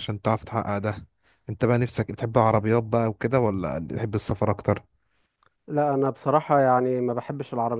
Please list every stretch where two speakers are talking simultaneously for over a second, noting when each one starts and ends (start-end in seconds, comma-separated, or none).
none